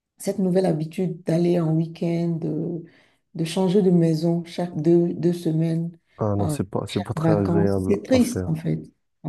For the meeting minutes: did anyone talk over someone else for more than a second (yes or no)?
yes